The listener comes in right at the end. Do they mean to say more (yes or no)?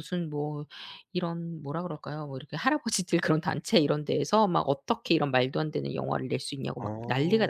no